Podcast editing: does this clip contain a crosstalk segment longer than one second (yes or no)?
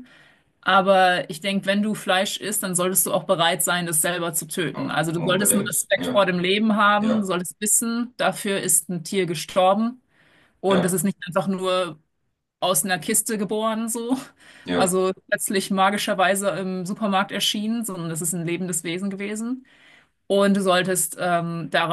yes